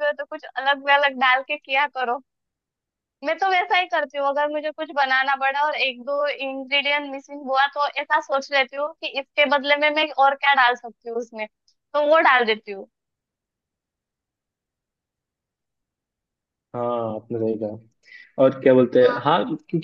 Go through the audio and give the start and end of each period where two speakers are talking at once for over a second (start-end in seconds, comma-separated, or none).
none